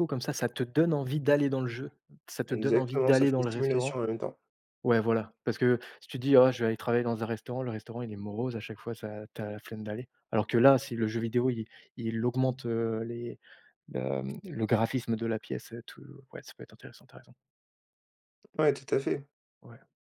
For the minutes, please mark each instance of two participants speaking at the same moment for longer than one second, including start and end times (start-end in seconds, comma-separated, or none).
2.5-3.9